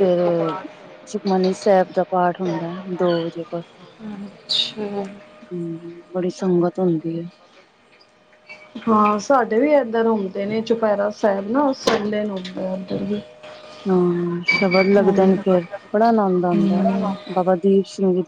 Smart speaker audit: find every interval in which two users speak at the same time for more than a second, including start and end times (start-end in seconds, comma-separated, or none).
none